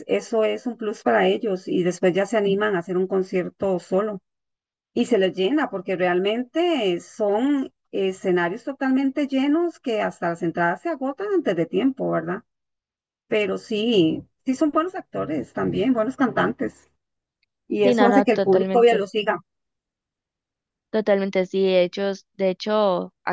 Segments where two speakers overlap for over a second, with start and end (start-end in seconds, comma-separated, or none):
17.8-19.0